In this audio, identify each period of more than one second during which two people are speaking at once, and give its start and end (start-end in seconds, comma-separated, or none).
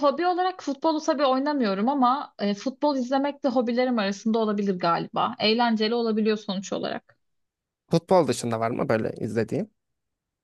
none